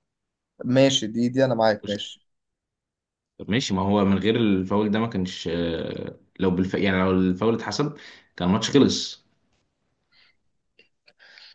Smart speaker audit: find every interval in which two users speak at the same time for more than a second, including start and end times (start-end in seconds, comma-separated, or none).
none